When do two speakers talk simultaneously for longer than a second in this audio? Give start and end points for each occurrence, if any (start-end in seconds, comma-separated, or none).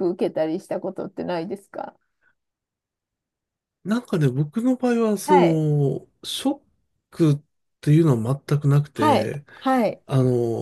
none